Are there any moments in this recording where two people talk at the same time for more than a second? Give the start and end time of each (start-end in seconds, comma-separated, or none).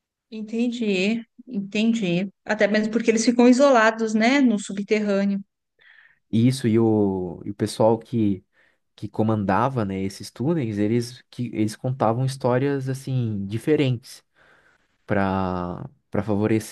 none